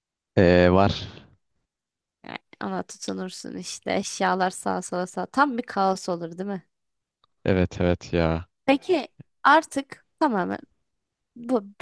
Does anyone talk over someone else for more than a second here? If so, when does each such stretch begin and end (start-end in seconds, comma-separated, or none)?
none